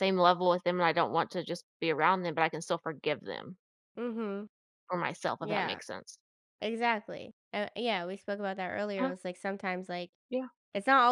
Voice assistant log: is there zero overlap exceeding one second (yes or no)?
yes